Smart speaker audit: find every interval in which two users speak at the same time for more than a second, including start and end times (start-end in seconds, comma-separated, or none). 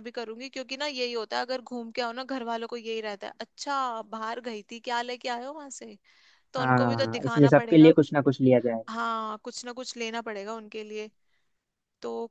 6.6-7.9